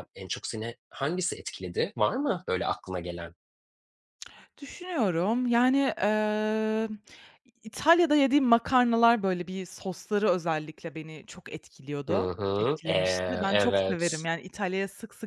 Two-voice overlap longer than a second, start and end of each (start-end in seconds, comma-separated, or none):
12.1-14.3